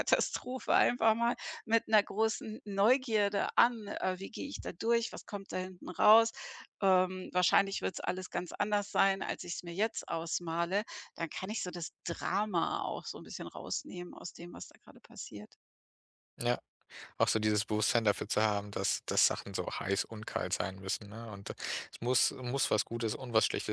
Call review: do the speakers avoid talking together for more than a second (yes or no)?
yes